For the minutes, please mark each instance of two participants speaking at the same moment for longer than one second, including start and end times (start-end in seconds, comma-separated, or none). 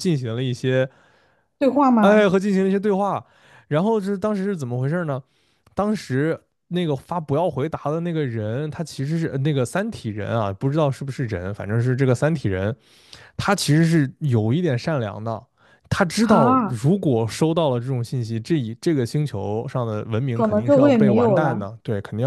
20.3-21.6